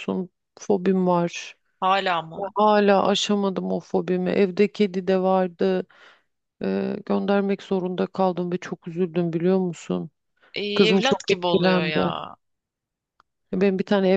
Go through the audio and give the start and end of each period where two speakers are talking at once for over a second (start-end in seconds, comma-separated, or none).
10.7-12.0